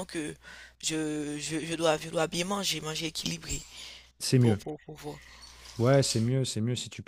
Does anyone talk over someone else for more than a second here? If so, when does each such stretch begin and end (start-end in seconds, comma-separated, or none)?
none